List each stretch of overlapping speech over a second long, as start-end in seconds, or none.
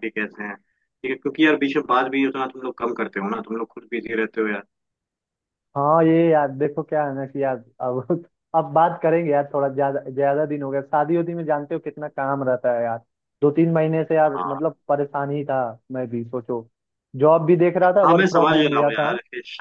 17.8-19.1